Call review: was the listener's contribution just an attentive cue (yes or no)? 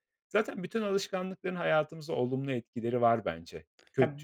no